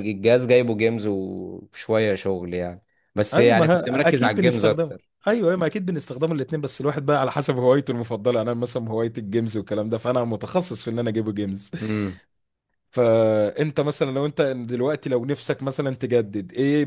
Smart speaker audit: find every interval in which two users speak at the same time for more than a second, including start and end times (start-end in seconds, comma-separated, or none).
3.3-5.1